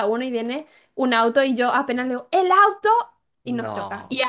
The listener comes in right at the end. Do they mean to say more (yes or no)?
no